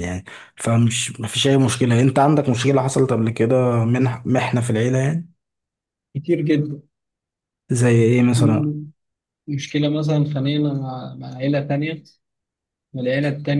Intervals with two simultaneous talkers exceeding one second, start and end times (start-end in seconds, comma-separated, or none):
none